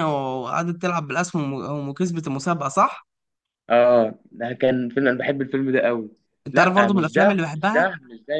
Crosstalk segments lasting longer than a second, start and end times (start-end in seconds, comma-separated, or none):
6.5-7.9